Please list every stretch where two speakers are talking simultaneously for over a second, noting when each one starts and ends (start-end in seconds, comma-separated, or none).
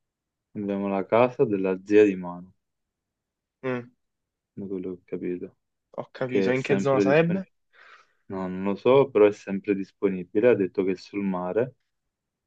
6.2-7.5